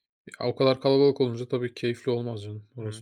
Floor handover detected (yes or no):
yes